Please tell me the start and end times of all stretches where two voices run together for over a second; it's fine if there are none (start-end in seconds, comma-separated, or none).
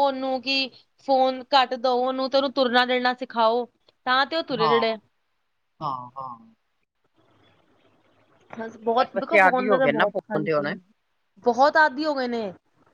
9.0-10.7